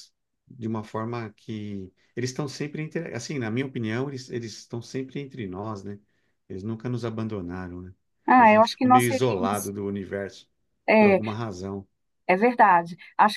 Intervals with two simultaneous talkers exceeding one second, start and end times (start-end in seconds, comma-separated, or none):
8.4-9.7